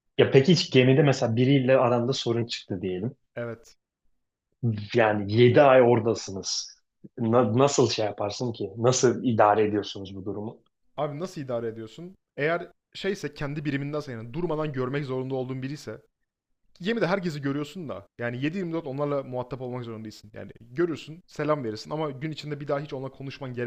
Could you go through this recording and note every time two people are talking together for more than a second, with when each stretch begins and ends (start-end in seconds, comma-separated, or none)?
none